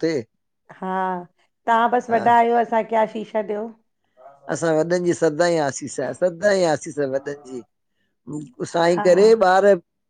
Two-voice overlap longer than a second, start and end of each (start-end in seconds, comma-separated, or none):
none